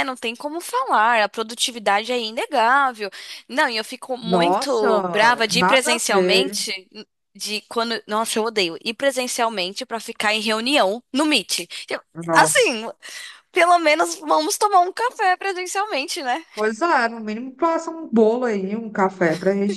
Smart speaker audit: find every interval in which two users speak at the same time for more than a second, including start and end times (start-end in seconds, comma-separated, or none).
4.2-6.6